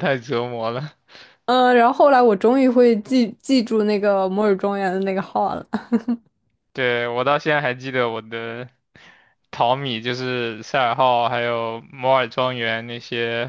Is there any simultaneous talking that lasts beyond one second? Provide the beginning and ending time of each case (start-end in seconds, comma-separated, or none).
none